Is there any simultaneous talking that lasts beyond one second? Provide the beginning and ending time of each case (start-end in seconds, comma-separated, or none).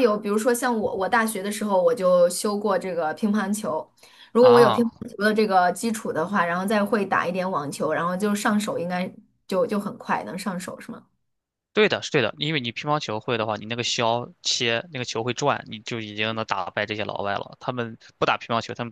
none